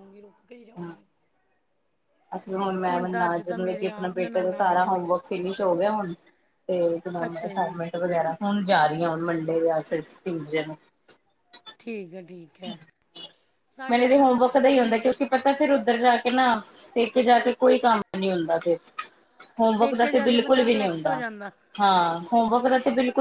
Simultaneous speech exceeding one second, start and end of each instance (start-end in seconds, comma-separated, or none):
3.5-5.1, 13.9-15.3, 19.8-21.2